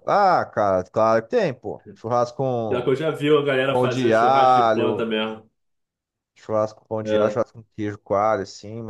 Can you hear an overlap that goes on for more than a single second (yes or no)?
yes